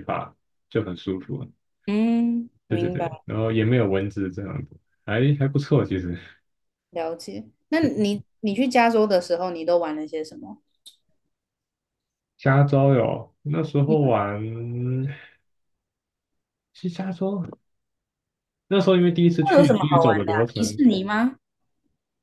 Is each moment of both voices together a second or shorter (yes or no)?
no